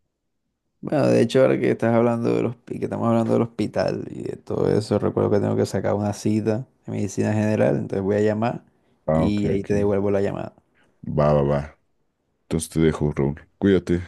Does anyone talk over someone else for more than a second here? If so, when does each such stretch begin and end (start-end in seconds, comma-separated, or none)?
none